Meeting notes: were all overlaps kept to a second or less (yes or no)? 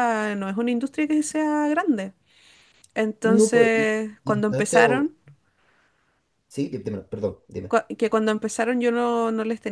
no